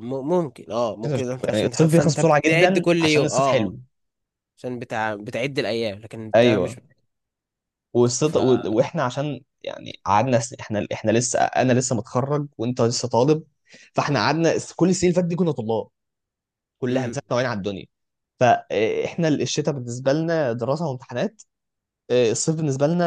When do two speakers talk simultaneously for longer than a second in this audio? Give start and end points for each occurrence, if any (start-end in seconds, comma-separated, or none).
1.0-3.8